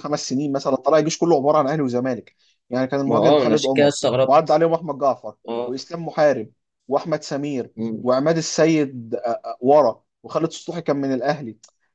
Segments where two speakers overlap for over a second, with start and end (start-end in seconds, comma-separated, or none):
3.0-4.6